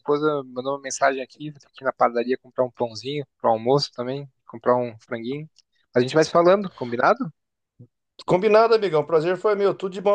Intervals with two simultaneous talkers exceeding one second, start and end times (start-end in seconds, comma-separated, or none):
none